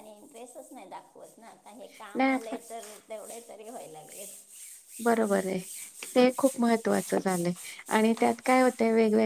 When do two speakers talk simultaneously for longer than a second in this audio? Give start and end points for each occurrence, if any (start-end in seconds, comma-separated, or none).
none